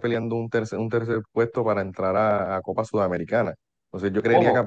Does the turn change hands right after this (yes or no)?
no